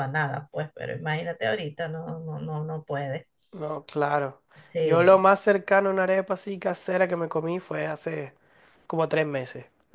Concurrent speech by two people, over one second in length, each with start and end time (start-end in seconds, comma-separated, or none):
none